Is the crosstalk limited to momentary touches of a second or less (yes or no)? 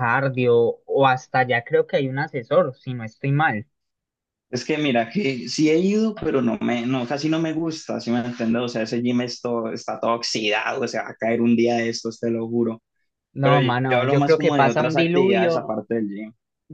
no